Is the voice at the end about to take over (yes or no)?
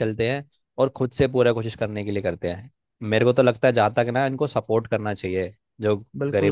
yes